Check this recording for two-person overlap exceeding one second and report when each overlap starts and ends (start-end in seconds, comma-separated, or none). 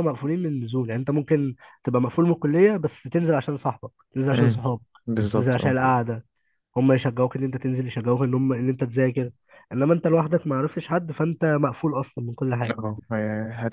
none